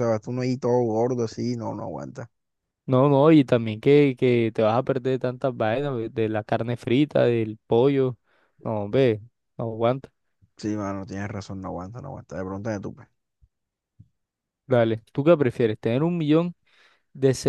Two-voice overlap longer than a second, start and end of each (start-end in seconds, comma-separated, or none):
none